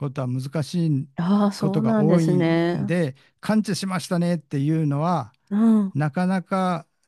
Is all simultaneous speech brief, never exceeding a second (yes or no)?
no